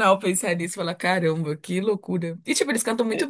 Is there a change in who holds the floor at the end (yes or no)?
no